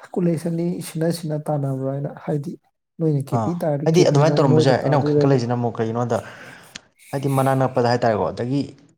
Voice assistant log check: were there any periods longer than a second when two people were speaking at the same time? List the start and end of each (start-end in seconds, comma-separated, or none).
3.4-5.4